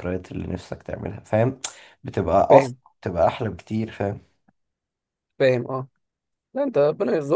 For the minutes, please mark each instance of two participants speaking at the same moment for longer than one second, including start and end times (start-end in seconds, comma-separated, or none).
none